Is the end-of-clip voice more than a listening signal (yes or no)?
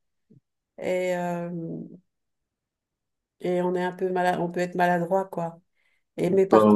no